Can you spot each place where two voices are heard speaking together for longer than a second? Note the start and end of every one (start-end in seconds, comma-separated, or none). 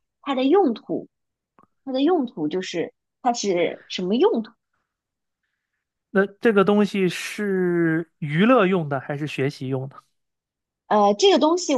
none